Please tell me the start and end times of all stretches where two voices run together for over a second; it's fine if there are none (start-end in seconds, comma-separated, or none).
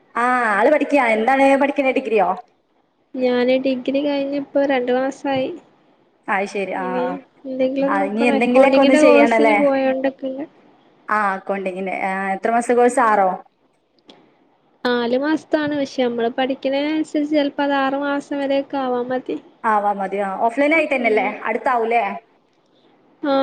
7.9-9.6